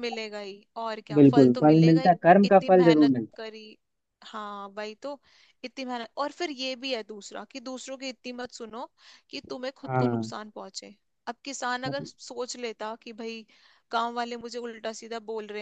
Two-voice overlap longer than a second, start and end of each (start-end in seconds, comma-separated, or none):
1.2-3.4